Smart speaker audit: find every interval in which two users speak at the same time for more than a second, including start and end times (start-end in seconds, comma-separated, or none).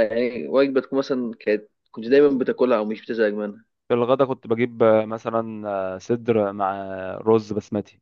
none